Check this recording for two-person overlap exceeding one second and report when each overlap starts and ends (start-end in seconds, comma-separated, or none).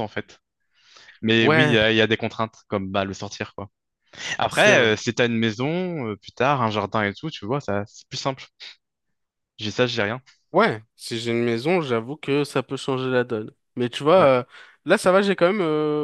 none